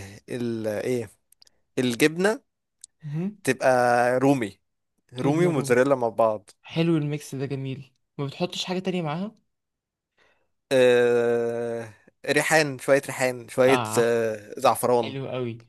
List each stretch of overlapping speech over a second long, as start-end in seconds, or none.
none